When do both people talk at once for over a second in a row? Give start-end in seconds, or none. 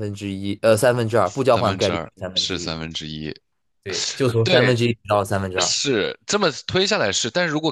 1.2-2.7